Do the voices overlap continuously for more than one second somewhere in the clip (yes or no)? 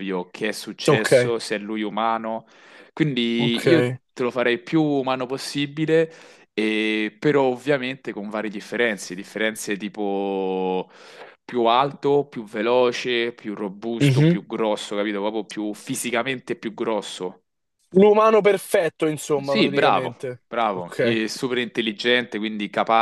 yes